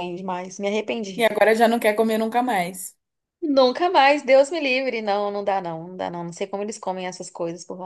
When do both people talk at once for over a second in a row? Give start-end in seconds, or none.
none